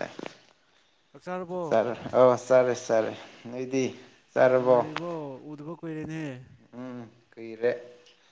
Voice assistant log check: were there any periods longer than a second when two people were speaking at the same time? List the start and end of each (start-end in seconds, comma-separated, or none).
none